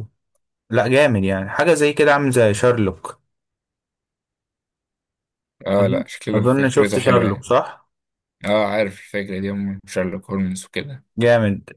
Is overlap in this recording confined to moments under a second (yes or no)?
no